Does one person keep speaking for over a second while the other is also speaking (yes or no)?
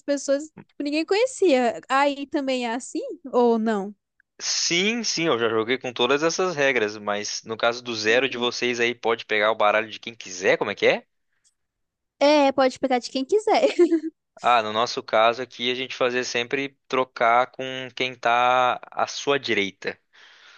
no